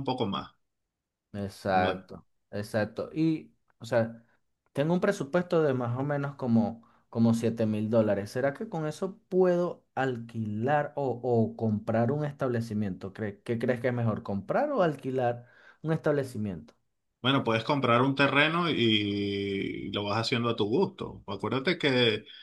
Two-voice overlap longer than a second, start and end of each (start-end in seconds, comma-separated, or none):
none